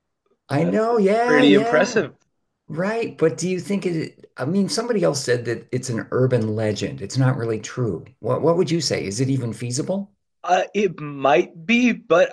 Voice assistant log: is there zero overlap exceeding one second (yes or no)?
no